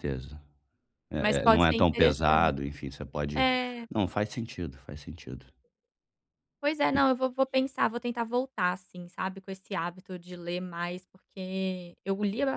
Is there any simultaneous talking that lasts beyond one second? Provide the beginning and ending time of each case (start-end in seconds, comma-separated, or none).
1.2-2.5